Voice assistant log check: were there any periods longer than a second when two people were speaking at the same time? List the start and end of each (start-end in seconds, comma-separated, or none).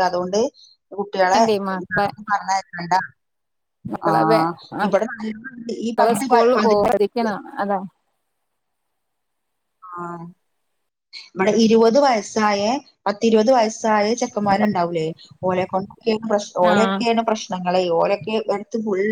5.2-7.0